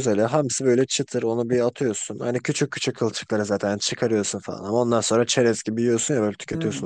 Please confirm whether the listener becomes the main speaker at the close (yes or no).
yes